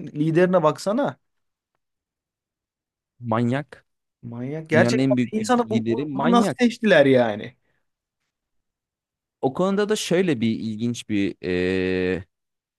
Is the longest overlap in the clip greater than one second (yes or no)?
yes